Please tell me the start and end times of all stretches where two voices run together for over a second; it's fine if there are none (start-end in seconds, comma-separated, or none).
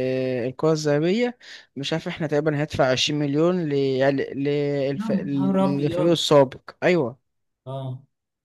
5.0-6.2